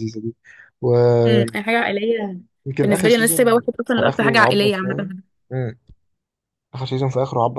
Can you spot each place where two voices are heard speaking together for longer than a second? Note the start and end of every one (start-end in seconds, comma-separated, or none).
2.9-5.1